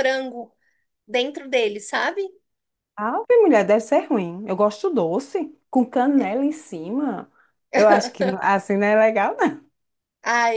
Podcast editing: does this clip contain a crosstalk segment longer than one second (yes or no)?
no